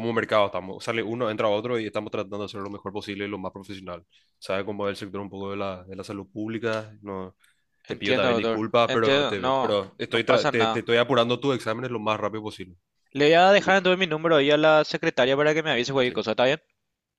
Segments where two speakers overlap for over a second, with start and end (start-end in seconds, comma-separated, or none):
7.8-10.8